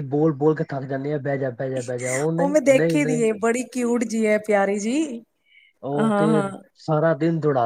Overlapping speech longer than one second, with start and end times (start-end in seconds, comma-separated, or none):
none